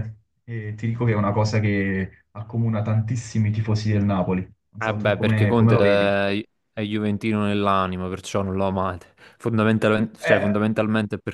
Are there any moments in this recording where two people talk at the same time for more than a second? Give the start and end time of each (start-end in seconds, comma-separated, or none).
4.8-6.2